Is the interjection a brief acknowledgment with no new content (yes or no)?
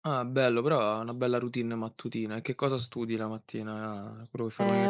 no